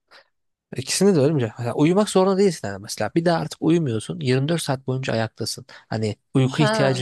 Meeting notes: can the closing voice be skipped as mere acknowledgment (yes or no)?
no